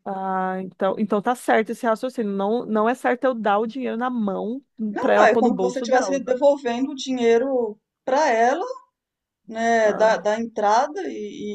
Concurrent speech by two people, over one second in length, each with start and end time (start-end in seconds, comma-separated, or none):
5.0-6.3